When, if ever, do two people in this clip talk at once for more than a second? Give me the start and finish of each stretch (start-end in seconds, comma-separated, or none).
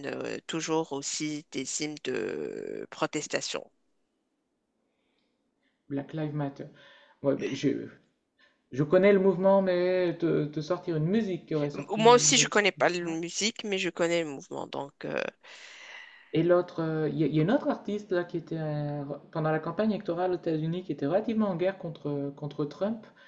11.7-13.2